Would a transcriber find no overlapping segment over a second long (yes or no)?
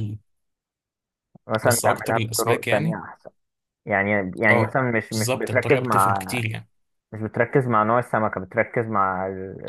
no